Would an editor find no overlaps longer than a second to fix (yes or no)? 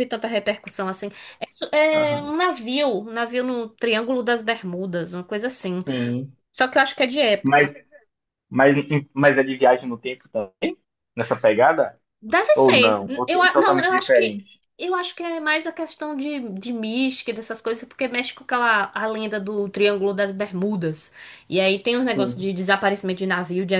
no